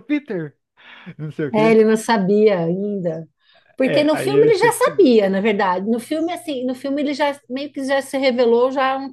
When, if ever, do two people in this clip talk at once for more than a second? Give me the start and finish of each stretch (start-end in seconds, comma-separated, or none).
3.8-5.1